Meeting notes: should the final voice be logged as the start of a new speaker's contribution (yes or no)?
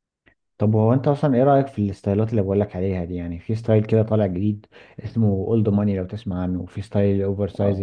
no